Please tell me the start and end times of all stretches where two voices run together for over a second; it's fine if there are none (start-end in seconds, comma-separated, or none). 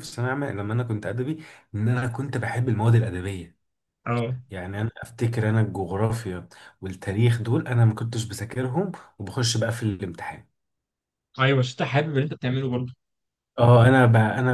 none